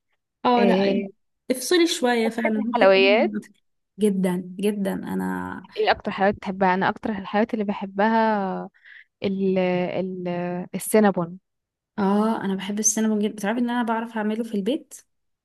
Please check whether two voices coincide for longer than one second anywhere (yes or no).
yes